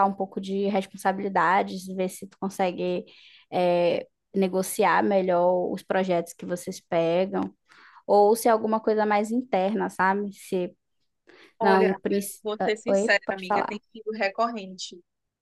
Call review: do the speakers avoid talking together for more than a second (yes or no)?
no